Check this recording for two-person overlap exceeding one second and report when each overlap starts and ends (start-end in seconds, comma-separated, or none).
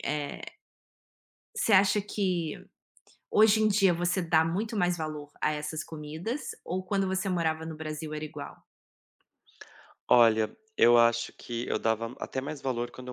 none